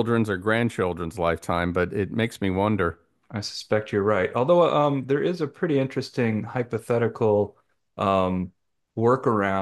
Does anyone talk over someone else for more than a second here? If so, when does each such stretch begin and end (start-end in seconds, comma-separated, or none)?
none